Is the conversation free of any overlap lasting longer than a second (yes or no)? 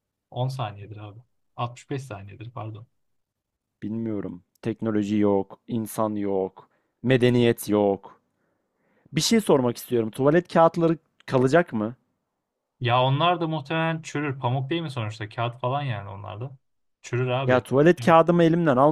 yes